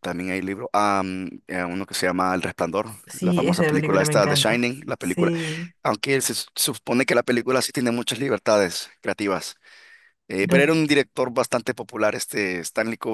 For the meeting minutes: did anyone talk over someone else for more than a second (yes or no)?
yes